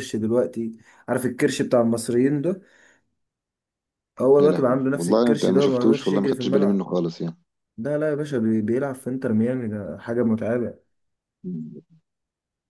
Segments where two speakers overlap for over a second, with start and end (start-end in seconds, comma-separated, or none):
4.4-6.9